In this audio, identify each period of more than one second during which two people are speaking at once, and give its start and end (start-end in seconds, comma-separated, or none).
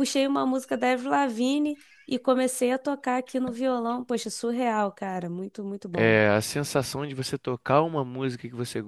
none